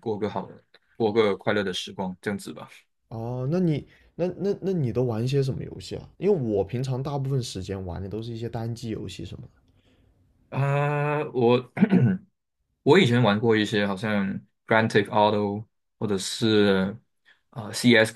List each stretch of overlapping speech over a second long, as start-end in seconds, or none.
none